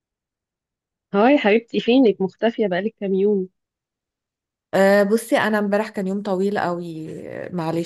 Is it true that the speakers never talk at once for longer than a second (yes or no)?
yes